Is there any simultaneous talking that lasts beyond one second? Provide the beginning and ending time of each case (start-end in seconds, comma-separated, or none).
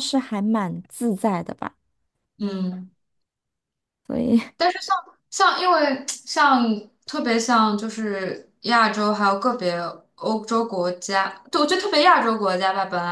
none